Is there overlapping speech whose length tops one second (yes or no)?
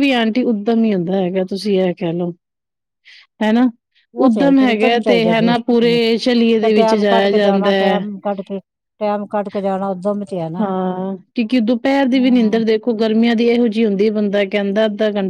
yes